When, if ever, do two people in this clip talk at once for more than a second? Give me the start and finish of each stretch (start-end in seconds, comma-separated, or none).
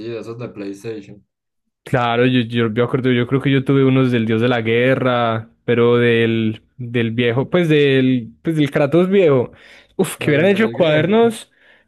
10.2-11.4